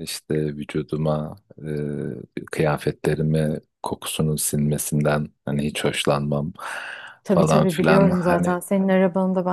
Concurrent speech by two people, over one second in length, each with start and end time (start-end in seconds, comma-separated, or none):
7.3-8.6